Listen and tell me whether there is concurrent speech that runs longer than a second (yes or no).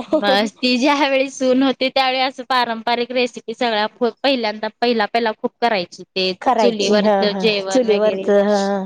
yes